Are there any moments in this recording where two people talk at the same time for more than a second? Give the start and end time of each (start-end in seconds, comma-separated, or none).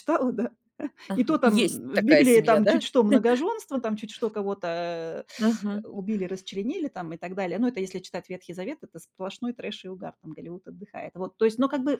1.1-2.8